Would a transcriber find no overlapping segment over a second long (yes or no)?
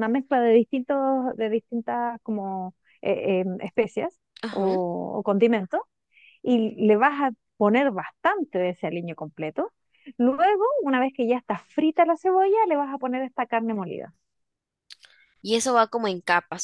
yes